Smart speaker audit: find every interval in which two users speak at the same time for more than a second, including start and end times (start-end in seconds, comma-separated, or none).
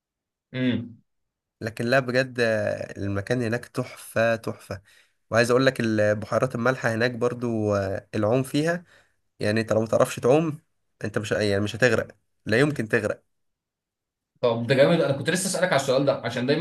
none